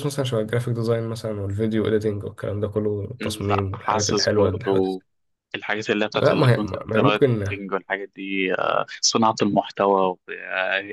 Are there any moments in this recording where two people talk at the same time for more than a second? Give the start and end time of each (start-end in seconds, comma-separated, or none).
3.2-4.9, 6.1-7.4